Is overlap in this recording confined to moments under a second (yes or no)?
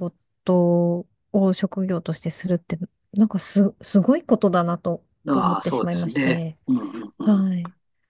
no